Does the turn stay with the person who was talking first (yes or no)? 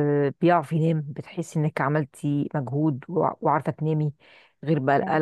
yes